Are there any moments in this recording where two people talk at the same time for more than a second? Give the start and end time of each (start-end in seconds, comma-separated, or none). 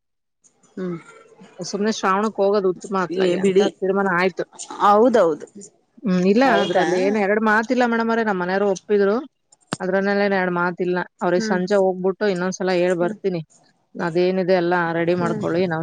none